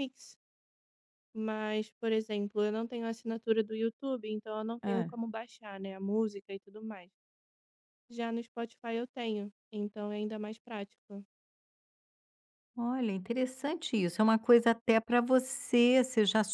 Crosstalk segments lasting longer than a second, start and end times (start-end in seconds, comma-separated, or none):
none